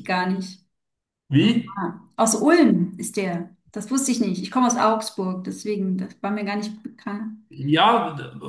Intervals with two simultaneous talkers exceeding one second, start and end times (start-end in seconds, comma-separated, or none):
none